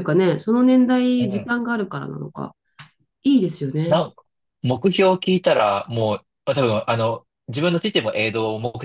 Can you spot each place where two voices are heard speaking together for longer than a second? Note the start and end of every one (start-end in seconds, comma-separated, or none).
none